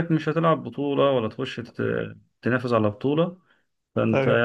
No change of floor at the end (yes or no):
yes